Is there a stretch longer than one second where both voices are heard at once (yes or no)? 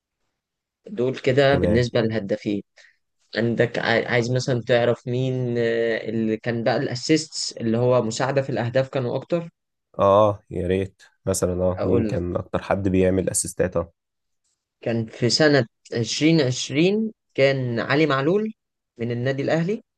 no